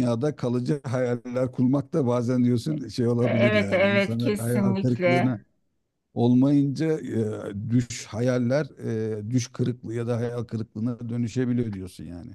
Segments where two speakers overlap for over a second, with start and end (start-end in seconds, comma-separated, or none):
3.2-5.3